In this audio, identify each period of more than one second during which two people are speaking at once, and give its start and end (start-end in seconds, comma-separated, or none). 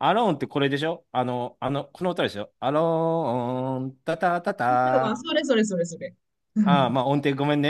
none